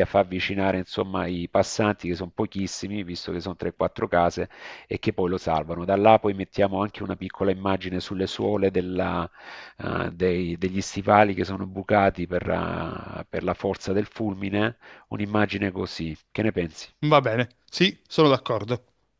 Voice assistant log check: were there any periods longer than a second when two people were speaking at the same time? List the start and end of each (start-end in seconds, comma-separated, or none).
none